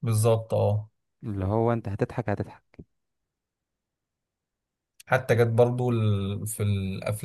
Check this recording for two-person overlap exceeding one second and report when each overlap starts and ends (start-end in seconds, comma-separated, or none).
none